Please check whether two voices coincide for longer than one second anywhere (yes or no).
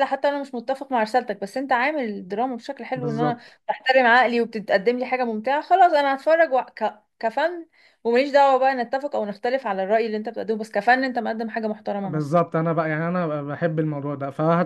no